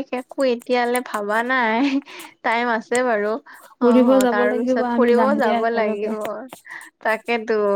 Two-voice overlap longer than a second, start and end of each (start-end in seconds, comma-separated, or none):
3.8-6.1